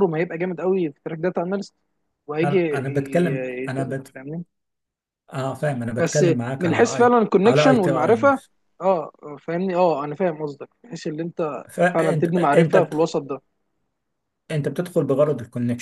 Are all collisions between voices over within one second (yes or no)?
no